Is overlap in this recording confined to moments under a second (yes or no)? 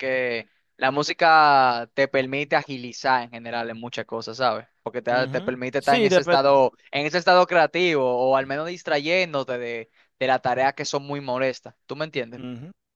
no